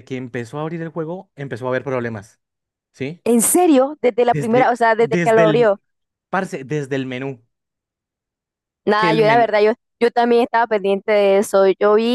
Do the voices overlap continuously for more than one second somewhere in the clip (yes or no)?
yes